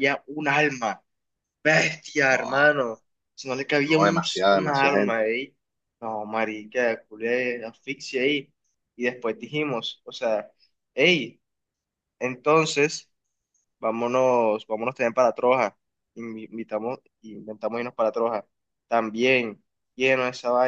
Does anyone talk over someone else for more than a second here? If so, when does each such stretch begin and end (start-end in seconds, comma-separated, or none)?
3.9-5.3